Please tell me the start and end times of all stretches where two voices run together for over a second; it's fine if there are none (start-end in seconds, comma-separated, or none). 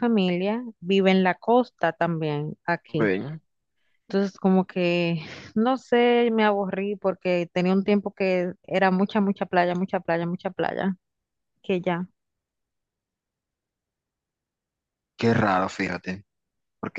none